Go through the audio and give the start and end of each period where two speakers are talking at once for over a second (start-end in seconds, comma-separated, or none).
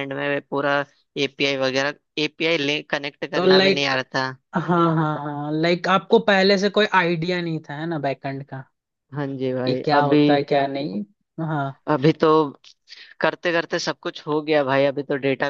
none